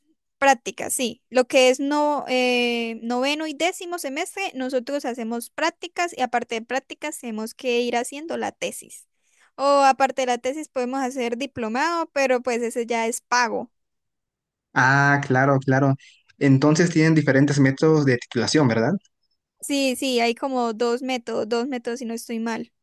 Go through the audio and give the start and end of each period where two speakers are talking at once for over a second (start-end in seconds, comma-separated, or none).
none